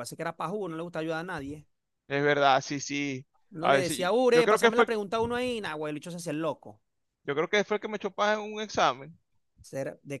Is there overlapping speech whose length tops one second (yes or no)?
yes